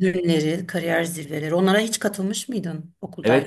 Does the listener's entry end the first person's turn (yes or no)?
yes